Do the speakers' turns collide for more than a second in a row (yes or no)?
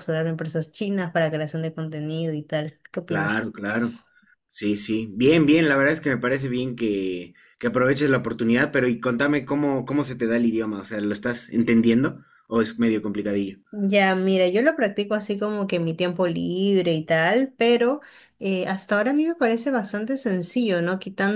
no